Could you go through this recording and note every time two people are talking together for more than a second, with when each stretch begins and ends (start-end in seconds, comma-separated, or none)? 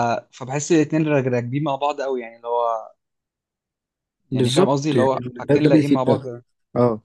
4.3-6.3